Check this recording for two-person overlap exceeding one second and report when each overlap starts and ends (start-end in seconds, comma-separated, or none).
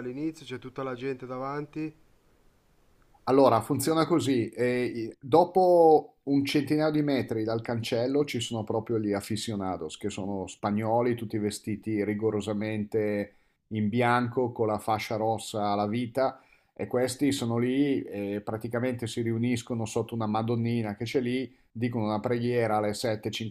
none